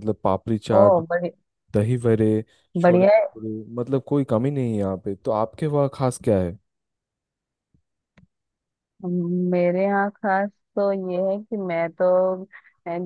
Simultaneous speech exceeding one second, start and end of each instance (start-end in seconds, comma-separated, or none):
none